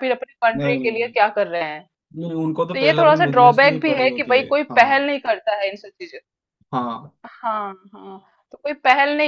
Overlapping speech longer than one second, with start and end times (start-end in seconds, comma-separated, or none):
2.7-5.1